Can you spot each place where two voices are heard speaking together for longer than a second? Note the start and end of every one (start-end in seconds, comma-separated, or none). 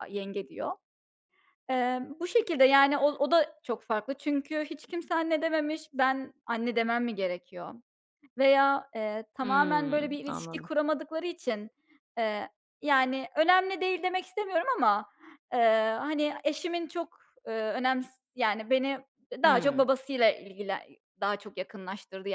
9.4-10.7